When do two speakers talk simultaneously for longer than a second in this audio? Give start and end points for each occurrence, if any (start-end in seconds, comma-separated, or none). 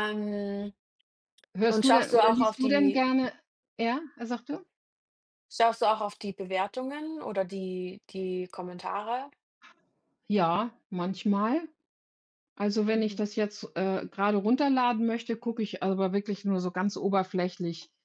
1.7-3.0